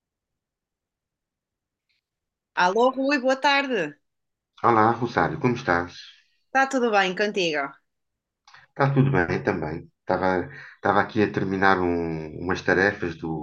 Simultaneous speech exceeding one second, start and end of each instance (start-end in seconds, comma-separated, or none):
none